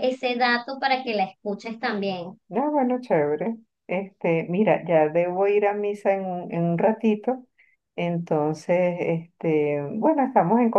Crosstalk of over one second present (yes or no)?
no